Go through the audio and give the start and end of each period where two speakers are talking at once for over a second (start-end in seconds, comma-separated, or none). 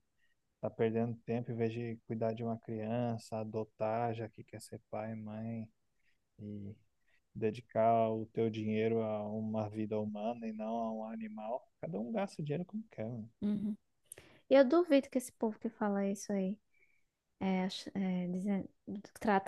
none